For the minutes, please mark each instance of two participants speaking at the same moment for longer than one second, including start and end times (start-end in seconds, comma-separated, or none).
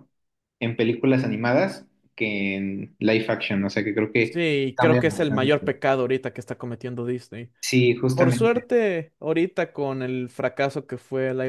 4.2-5.7